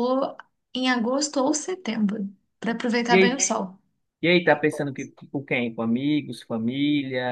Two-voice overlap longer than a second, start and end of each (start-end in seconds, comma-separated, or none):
none